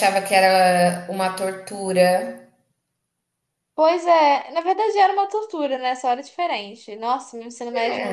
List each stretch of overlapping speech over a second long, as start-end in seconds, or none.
none